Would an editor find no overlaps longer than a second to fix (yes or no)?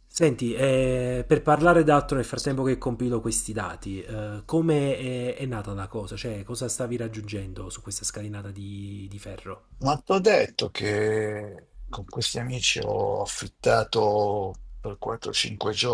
yes